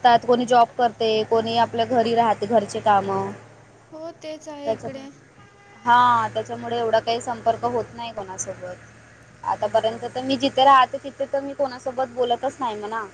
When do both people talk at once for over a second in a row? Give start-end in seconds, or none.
none